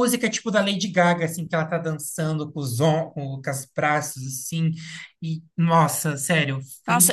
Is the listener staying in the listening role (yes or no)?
no